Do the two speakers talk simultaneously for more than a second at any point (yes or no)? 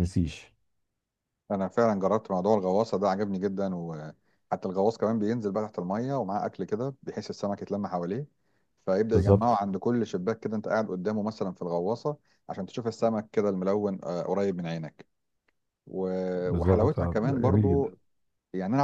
yes